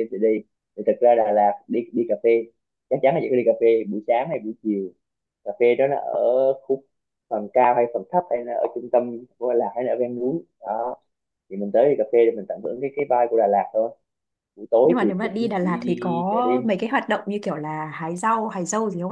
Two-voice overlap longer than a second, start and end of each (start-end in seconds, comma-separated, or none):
14.8-16.6